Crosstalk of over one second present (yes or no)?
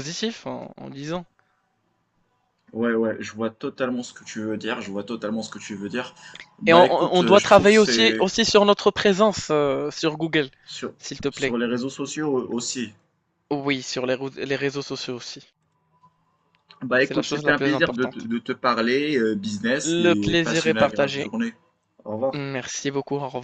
yes